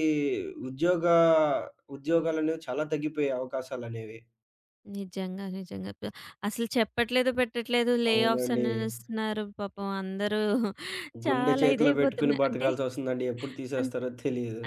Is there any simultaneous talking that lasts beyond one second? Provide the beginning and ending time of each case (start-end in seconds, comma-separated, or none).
11.3-12.7